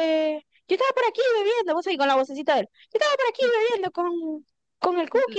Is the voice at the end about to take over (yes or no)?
no